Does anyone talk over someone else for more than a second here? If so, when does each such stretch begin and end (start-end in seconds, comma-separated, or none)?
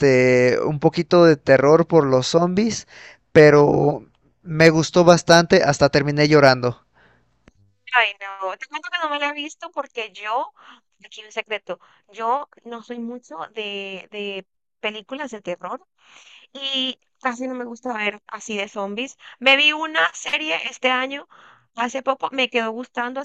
none